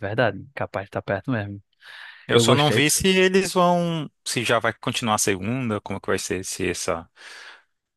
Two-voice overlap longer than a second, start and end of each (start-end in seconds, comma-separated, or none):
none